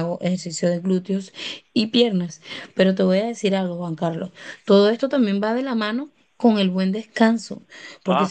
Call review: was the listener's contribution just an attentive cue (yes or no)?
yes